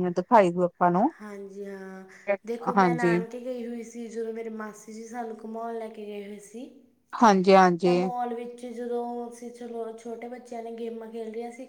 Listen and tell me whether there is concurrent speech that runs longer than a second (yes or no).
no